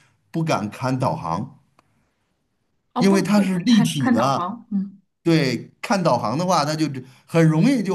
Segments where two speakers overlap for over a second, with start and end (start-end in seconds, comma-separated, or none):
3.0-4.6